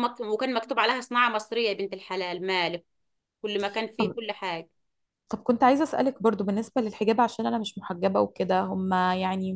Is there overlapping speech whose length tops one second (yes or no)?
no